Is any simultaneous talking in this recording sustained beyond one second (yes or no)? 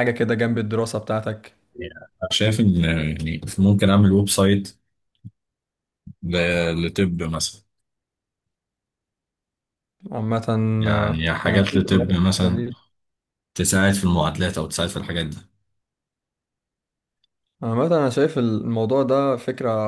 yes